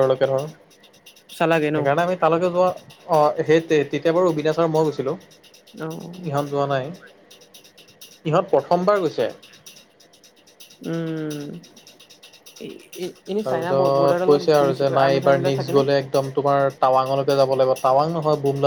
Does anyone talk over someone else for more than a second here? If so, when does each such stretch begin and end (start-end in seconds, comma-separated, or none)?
13.5-15.8